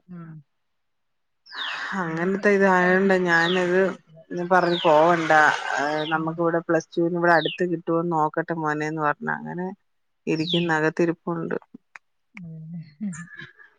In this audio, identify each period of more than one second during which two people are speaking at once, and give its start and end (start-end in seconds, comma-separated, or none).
2.1-3.9